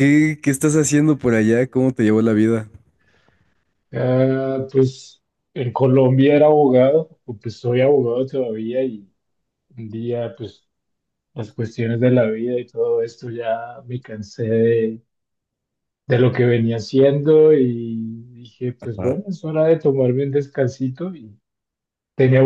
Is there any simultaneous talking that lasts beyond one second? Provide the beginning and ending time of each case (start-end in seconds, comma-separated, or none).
none